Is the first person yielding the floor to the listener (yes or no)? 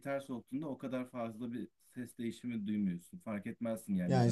yes